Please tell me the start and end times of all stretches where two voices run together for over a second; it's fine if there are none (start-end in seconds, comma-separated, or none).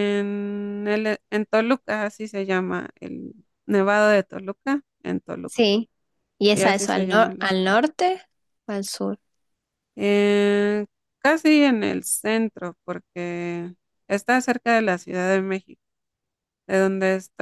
6.4-7.8